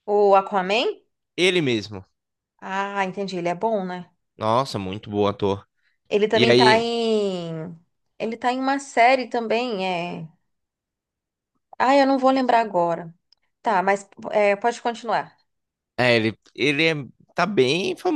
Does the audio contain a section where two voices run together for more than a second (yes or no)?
no